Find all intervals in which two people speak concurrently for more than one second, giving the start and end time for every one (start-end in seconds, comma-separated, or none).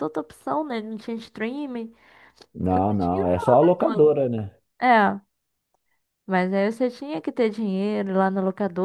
2.7-4.0